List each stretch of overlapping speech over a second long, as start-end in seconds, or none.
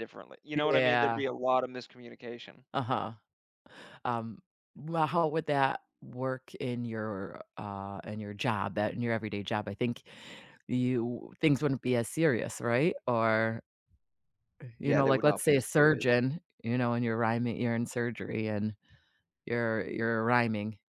14.8-16.1